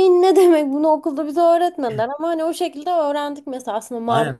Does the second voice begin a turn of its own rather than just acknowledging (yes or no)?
yes